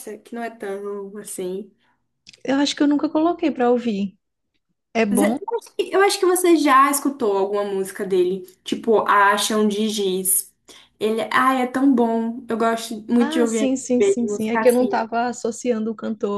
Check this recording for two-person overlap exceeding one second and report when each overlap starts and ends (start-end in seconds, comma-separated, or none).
13.2-14.9